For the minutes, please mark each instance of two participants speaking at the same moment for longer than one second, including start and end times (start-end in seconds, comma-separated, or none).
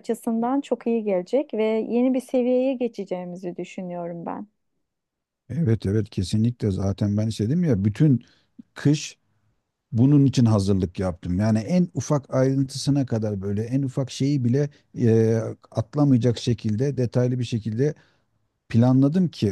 none